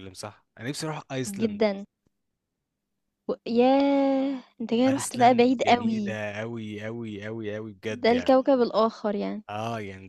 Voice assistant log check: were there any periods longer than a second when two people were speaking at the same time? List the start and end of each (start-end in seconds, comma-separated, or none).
4.9-6.2